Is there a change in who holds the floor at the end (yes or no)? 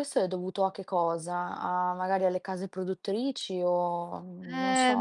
yes